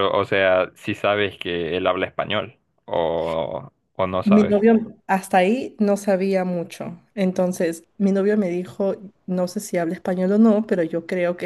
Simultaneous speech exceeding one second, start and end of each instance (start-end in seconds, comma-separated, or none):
none